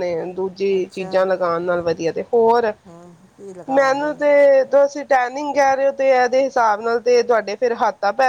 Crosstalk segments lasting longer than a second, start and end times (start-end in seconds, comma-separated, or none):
none